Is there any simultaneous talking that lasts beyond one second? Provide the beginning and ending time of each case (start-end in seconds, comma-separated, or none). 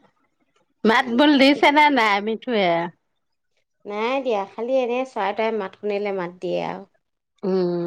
none